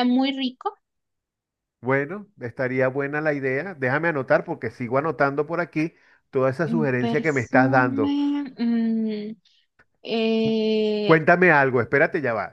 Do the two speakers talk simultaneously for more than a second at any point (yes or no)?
yes